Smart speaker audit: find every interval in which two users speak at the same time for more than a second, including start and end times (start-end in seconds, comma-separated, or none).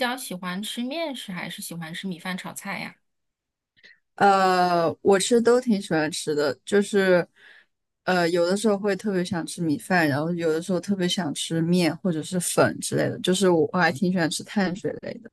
none